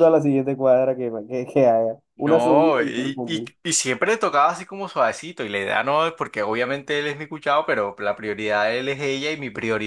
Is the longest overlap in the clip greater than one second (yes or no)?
yes